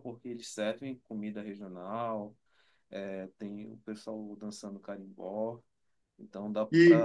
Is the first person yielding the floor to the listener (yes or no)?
yes